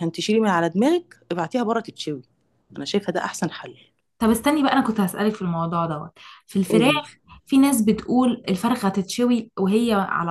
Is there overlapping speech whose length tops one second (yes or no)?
no